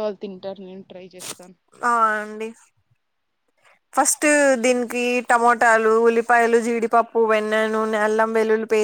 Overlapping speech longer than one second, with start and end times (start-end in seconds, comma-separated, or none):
none